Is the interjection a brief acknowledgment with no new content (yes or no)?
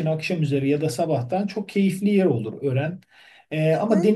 yes